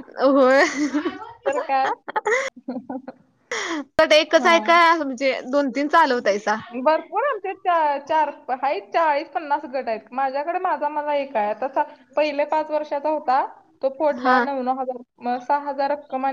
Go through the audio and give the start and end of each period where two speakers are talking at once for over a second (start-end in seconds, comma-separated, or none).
none